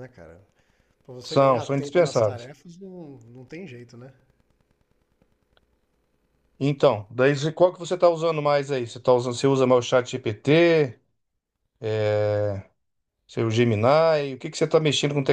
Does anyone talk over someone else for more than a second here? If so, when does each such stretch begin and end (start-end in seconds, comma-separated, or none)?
1.2-2.5